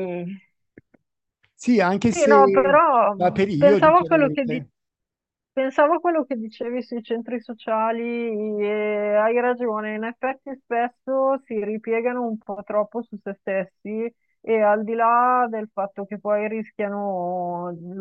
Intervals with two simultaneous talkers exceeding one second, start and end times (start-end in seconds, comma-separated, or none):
2.1-4.6